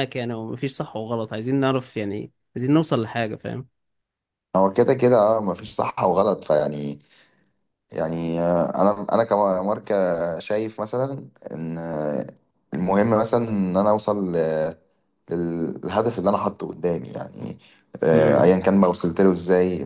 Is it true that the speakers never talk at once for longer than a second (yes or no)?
yes